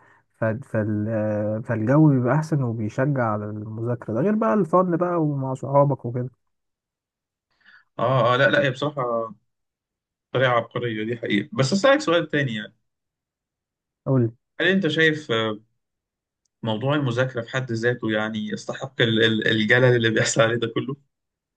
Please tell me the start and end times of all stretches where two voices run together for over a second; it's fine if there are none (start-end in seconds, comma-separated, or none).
none